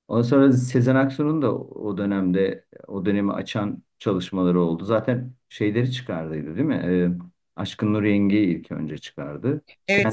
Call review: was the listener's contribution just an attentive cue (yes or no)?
no